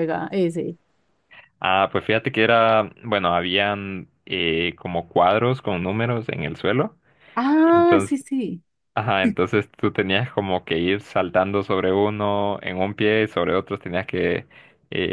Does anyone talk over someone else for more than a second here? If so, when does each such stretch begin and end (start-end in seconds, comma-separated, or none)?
none